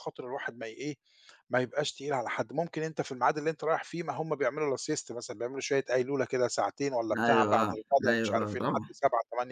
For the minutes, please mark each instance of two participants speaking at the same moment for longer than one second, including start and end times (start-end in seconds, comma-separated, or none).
7.2-8.9